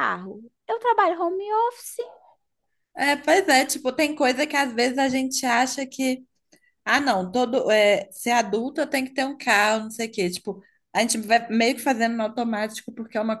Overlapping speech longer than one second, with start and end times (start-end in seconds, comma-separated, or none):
none